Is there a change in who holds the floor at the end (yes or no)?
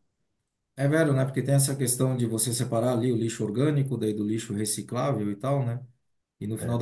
no